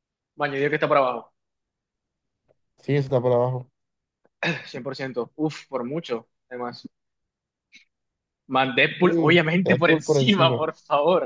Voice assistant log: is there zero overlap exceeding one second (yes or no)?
no